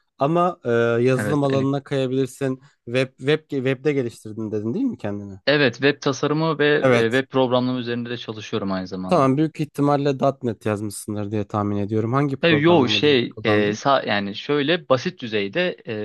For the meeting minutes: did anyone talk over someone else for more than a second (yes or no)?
yes